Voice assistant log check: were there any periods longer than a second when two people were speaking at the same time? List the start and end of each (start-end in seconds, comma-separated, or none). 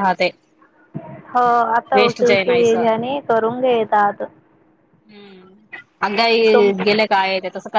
none